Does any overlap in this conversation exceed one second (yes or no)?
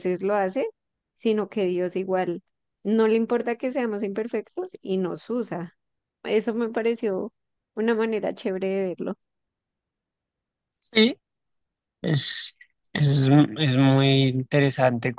no